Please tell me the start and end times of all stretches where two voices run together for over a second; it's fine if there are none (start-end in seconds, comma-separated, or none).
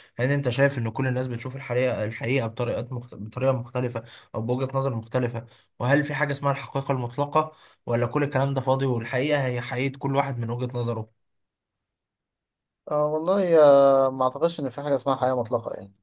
none